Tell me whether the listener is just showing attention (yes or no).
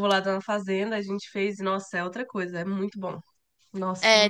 no